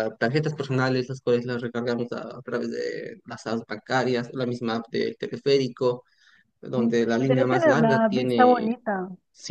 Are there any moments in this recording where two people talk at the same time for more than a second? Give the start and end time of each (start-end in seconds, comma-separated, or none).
6.8-8.7